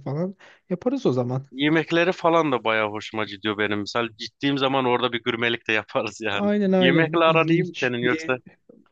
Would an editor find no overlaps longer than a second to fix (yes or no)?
no